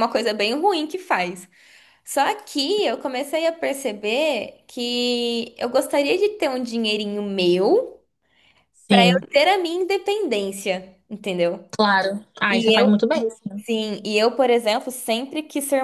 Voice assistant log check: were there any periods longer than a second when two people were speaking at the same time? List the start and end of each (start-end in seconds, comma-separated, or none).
none